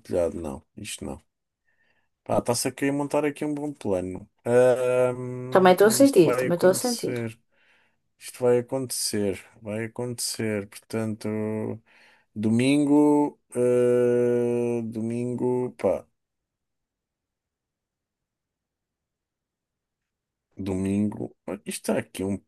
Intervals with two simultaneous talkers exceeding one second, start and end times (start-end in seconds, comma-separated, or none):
5.5-7.1